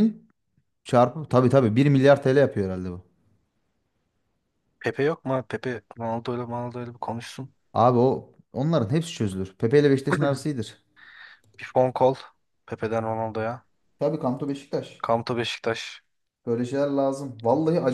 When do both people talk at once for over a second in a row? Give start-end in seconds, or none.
none